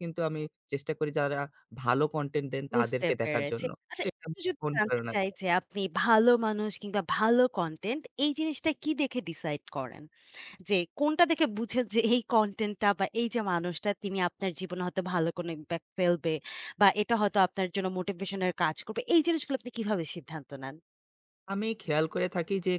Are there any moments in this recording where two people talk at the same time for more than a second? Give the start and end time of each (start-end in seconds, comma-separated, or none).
2.7-5.1